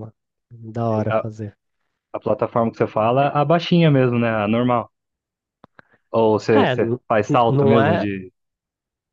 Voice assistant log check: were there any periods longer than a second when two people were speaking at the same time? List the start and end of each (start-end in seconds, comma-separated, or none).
6.5-8.1